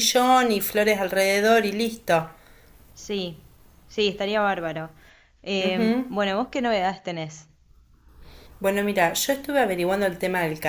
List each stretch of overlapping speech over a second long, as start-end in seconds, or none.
none